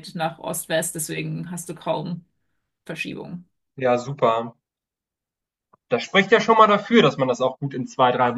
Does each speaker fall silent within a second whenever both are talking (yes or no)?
yes